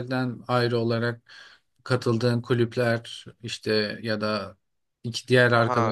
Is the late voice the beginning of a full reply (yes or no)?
yes